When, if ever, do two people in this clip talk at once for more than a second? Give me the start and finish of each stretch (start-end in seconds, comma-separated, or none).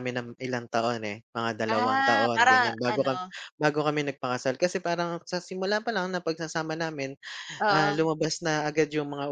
1.7-3.2